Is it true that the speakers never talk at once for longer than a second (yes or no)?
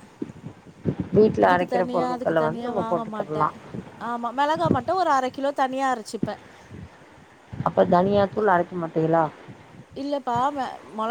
no